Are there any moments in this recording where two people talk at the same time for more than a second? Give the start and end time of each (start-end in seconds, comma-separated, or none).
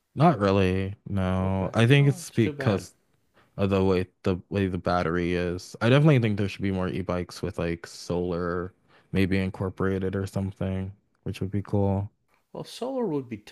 1.4-2.9